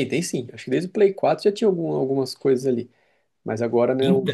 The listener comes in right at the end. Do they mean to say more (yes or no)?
no